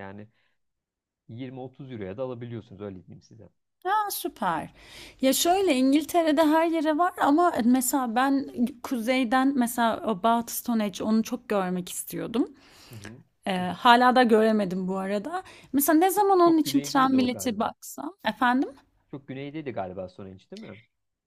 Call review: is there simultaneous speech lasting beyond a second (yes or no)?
yes